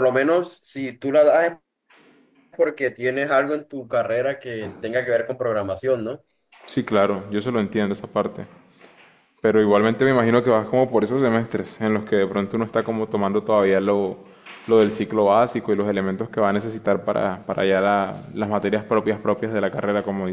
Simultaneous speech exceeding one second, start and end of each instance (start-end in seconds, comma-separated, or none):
none